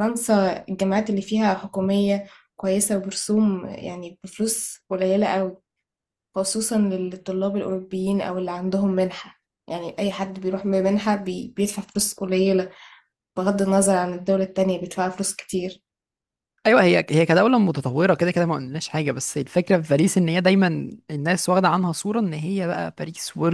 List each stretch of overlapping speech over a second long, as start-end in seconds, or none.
none